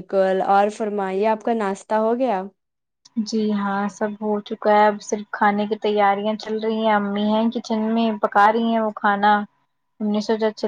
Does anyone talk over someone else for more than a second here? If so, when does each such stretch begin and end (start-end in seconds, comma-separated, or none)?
none